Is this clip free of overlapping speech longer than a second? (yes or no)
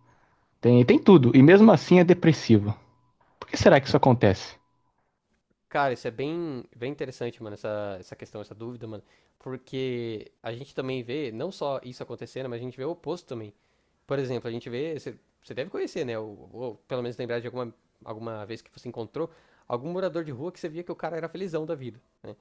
yes